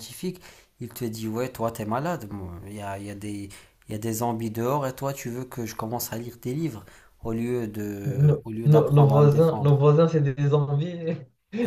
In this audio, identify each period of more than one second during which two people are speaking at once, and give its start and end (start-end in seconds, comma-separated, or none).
8.0-9.8